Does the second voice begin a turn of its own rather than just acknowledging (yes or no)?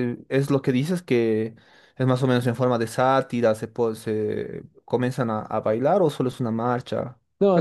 yes